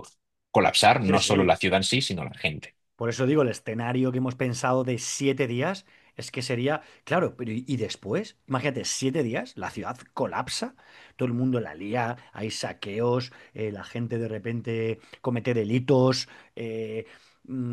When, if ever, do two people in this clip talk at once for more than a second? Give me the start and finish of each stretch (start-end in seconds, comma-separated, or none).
none